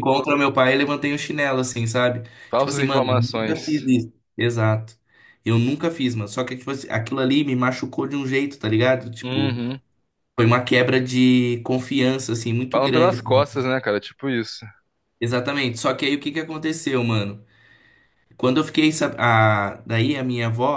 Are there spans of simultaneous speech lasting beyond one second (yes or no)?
yes